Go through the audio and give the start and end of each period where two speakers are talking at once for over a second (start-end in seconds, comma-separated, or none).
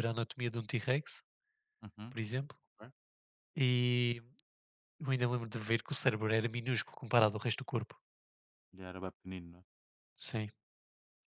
none